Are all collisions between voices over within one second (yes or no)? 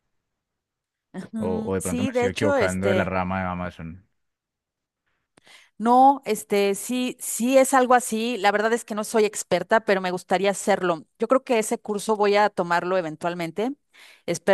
no